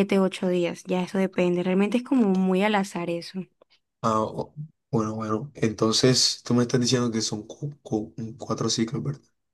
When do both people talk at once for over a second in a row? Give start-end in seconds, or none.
none